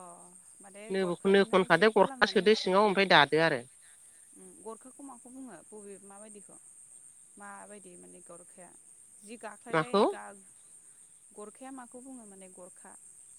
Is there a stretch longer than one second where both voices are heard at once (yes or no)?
yes